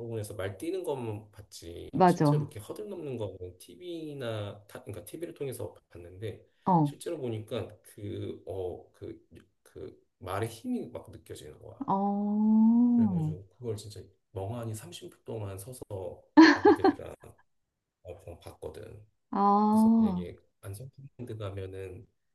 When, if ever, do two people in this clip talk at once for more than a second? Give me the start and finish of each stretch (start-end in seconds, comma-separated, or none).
none